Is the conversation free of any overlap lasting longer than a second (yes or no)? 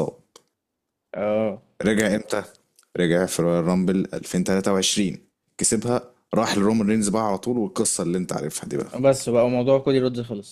yes